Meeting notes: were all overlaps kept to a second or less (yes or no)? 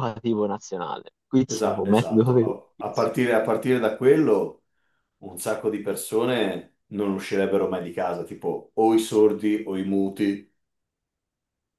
no